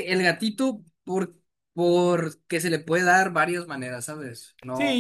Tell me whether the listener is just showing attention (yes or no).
no